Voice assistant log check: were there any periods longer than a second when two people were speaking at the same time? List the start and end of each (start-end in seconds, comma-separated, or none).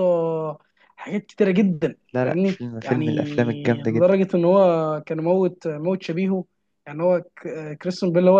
2.1-4.2